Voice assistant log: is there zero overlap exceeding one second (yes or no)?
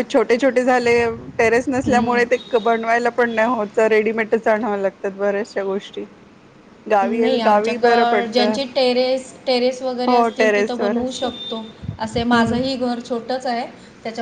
no